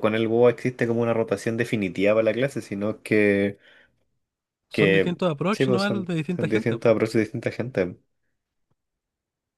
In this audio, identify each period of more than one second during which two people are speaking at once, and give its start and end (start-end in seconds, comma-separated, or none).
4.7-7.0